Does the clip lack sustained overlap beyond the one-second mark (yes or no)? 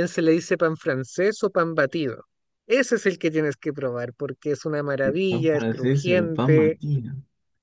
no